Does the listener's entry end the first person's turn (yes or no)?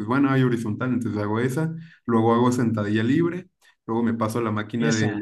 no